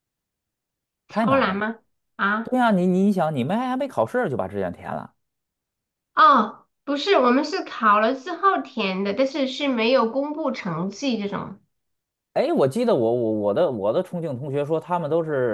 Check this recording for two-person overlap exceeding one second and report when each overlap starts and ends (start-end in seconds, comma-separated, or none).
none